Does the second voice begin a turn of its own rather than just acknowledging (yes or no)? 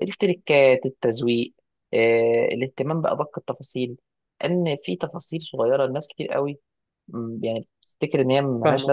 yes